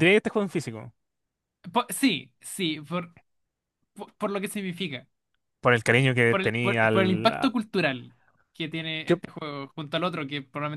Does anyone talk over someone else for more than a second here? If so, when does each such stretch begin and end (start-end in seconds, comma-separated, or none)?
6.3-7.5